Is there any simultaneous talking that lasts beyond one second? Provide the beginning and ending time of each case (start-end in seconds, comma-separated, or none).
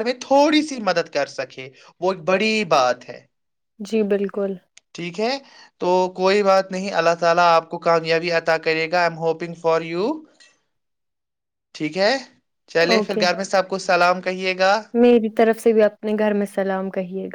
none